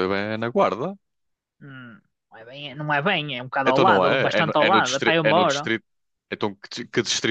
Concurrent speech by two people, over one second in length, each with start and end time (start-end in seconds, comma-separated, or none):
3.6-5.7